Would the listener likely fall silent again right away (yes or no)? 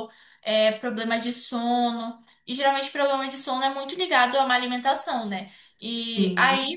yes